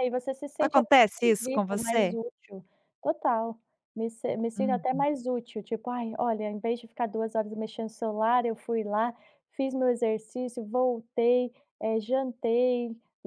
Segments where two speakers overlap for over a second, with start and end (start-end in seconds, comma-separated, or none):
0.6-2.2